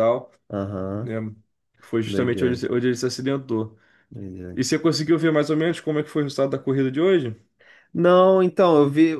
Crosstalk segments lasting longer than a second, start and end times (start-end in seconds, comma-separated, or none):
none